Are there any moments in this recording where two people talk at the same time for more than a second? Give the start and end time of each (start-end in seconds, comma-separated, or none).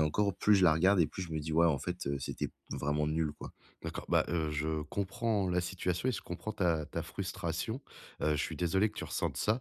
none